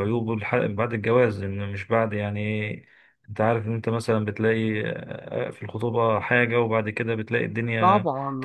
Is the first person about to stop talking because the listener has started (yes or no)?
yes